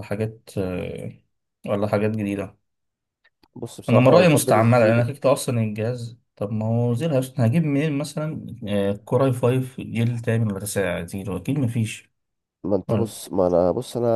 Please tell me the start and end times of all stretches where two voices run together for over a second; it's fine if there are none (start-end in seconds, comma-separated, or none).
3.9-5.1